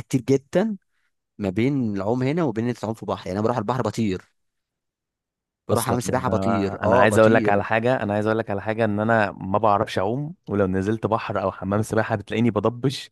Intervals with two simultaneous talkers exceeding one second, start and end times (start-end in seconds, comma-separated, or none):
5.7-7.7